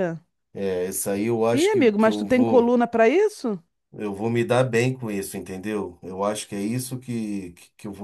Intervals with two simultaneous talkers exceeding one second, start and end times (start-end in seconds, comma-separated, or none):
1.5-2.7